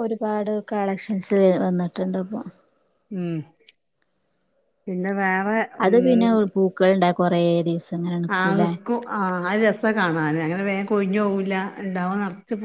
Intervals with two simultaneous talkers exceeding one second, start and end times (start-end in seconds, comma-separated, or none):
none